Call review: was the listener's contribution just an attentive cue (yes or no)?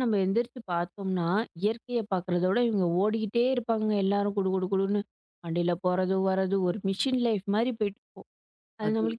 yes